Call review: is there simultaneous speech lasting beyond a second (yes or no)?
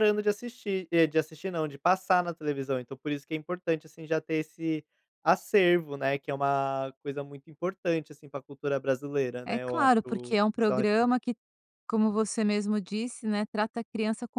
yes